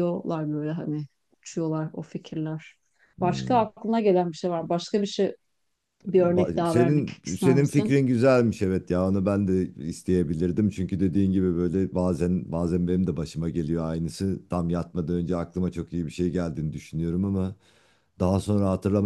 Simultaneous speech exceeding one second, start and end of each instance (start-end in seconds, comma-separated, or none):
6.1-8.0